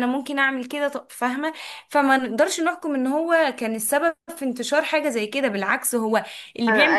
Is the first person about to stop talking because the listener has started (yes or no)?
yes